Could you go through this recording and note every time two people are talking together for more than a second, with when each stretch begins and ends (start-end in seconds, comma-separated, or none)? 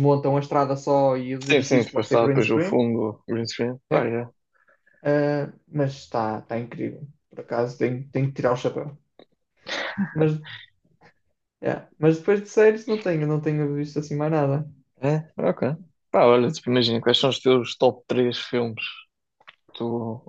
1.5-2.8